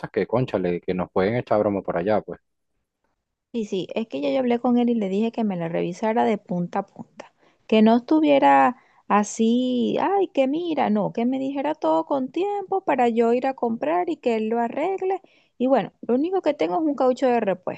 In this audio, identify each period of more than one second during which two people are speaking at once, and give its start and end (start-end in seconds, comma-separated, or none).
none